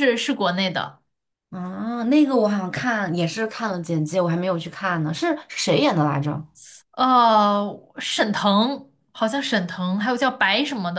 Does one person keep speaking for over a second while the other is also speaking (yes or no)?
no